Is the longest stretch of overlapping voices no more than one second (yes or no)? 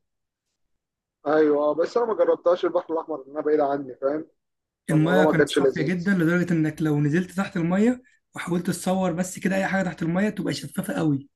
no